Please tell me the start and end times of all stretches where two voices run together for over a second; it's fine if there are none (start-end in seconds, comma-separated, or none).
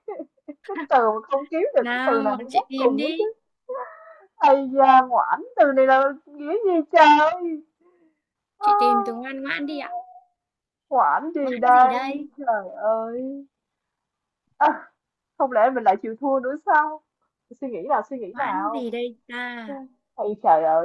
1.8-3.2